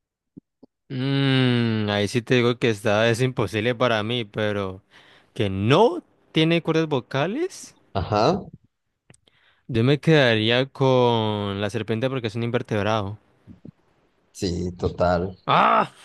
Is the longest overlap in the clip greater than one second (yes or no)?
no